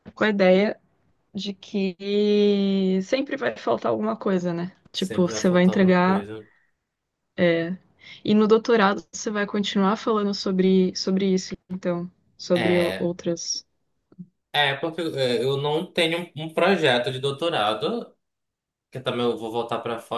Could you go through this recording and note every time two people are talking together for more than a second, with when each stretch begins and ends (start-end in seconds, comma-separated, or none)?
4.9-6.3